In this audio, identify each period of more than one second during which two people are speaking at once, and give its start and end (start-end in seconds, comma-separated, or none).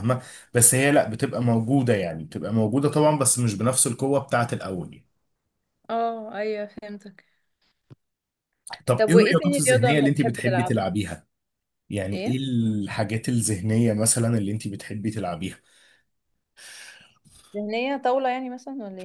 9.0-10.8